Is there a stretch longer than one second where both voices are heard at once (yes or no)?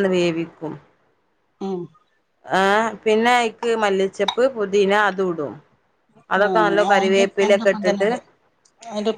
yes